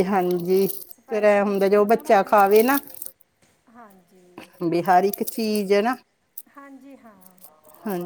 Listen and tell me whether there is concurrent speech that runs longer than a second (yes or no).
yes